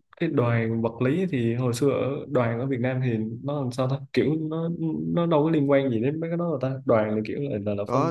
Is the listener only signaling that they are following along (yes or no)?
no